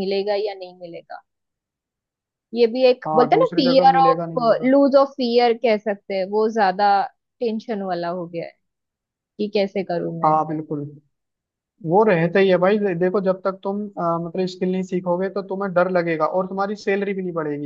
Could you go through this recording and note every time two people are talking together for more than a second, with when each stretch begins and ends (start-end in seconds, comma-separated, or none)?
3.0-4.7